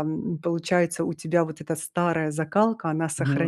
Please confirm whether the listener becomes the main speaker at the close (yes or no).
no